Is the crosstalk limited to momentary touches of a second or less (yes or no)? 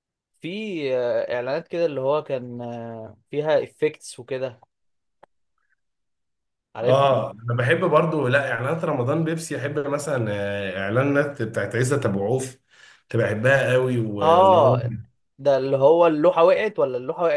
yes